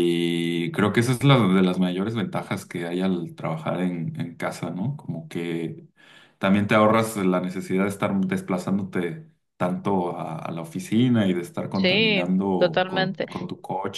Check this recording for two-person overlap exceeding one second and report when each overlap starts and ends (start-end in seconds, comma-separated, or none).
11.7-13.3